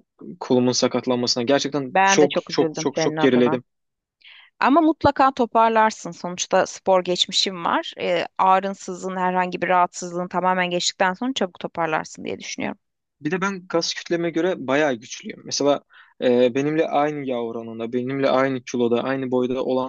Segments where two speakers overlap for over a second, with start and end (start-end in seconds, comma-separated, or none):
1.9-3.6